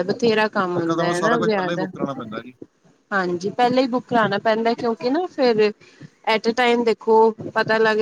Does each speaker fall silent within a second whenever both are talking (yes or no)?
no